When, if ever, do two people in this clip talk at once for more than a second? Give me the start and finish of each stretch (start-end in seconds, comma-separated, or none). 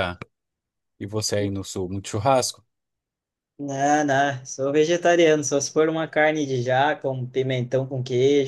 none